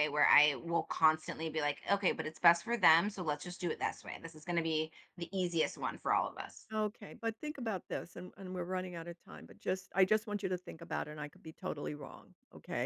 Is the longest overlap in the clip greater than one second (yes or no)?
no